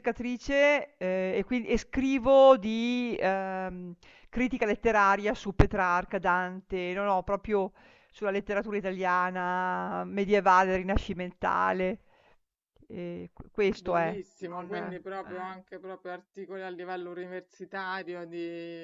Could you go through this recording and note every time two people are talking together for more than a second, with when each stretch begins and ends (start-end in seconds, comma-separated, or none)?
13.8-15.6